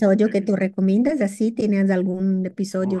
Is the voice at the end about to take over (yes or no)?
yes